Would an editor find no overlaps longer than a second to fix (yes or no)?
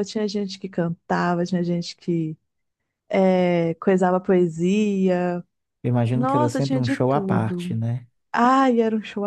no